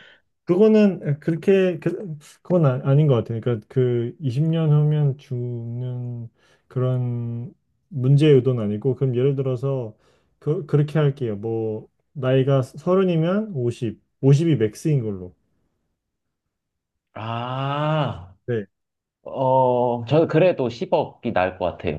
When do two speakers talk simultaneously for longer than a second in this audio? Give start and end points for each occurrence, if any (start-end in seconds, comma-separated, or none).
none